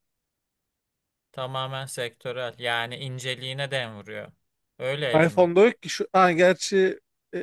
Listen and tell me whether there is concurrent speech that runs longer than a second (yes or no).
no